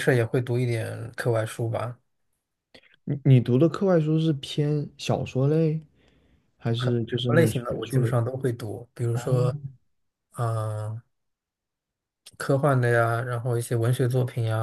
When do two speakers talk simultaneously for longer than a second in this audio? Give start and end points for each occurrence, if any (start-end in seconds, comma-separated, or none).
6.9-8.2